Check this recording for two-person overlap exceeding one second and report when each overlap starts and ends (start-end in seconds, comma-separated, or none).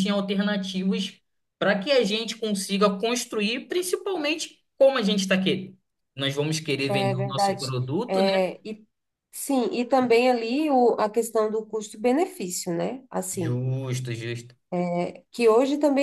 6.9-8.4